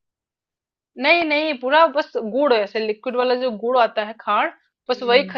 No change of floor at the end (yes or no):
yes